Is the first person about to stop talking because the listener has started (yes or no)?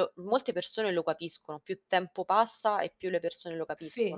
yes